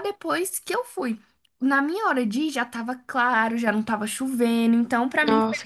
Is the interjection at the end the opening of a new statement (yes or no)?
yes